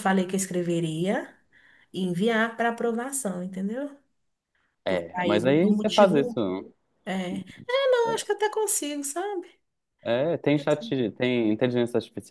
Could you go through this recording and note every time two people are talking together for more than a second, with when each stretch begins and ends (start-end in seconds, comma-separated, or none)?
4.8-6.4